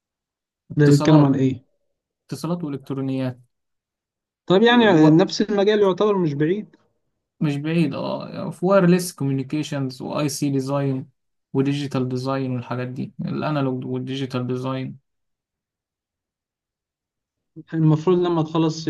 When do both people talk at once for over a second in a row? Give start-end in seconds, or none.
none